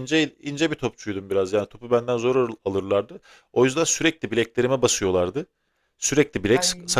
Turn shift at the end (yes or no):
no